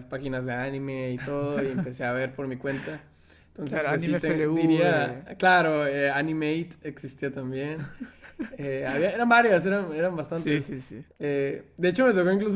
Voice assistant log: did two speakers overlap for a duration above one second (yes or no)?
yes